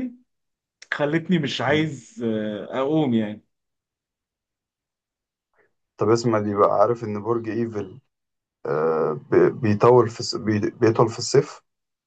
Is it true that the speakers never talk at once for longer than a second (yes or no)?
yes